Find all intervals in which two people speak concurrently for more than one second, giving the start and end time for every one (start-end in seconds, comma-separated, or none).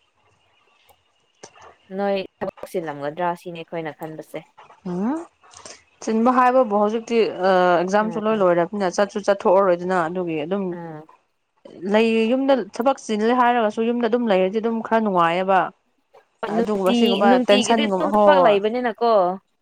16.5-18.6